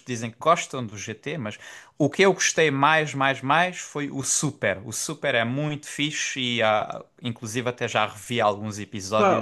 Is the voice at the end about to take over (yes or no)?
yes